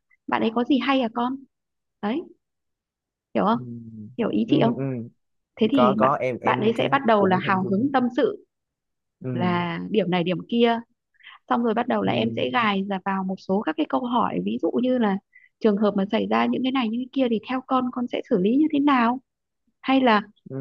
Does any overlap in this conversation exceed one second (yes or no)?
yes